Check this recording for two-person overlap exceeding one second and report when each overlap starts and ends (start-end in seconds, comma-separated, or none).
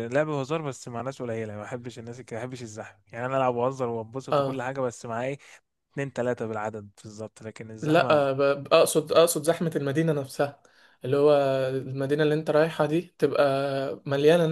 none